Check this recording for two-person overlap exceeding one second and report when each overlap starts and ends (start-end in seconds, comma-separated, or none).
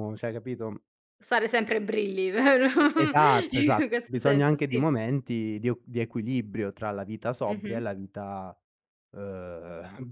3.5-4.8